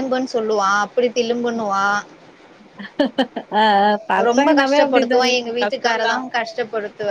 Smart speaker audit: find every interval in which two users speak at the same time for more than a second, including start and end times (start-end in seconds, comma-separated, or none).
4.3-6.1